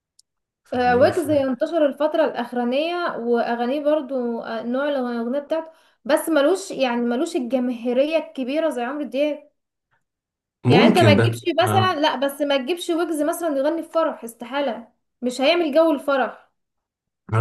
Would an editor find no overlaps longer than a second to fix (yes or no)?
no